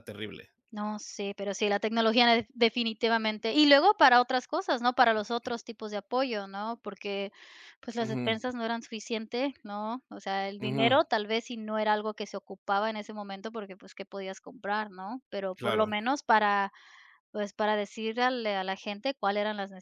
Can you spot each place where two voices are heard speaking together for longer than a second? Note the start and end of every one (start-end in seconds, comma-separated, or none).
none